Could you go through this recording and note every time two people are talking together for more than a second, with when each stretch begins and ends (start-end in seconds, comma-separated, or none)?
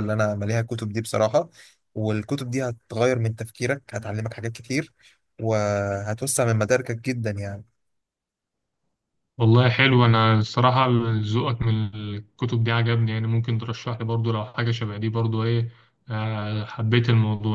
none